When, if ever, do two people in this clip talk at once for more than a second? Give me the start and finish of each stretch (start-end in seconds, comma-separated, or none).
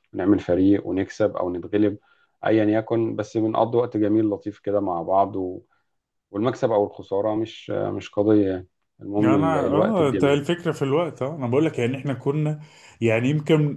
9.2-10.4